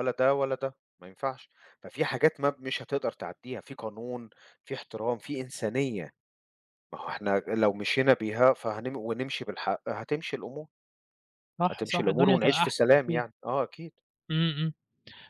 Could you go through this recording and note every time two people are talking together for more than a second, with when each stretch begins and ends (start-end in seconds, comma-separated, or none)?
11.7-13.2